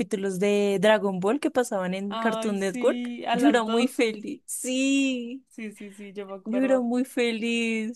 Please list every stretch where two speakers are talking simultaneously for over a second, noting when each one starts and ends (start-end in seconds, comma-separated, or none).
2.1-4.2